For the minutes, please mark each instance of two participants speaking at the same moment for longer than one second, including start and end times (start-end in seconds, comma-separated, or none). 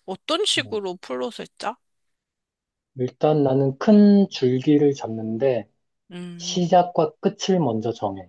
none